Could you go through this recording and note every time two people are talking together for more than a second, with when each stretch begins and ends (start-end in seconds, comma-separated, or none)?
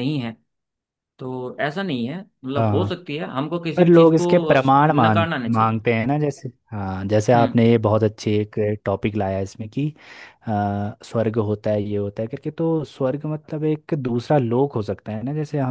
3.8-5.8